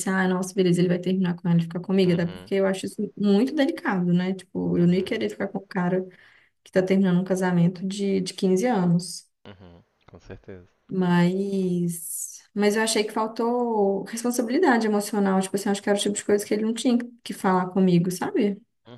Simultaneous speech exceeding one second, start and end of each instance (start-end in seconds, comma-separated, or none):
none